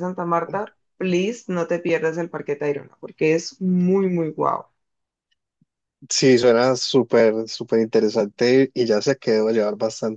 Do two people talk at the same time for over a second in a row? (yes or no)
no